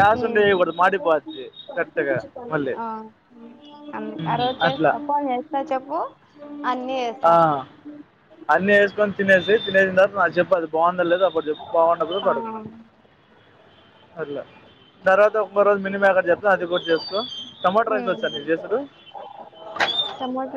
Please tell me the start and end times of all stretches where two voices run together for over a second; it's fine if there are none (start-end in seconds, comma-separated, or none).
none